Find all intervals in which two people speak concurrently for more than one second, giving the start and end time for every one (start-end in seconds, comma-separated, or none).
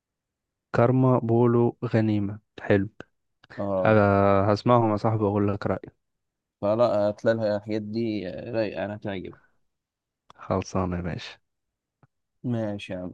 none